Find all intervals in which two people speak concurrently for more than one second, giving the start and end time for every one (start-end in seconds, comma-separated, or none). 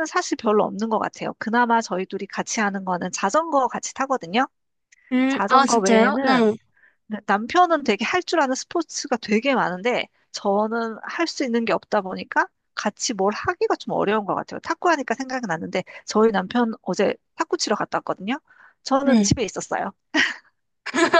5.3-6.5